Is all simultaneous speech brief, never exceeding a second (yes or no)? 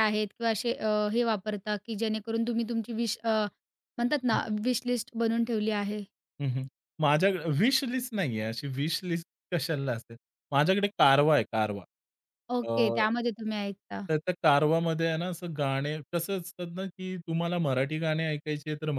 yes